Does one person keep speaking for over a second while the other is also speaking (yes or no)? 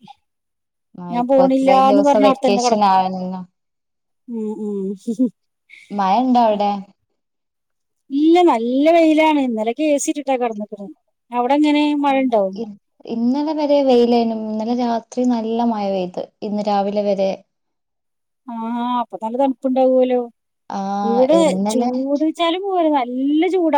yes